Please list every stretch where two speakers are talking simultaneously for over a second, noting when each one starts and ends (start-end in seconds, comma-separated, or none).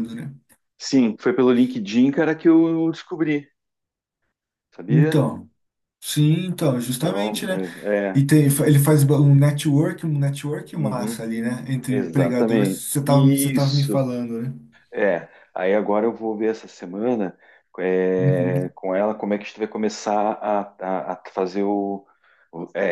11.9-14.1